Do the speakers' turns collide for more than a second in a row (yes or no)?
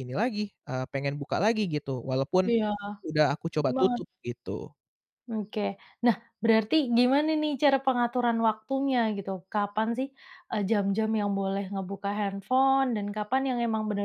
no